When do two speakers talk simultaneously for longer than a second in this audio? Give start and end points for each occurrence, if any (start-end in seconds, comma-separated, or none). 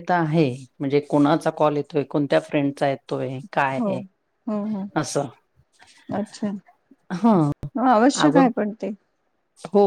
none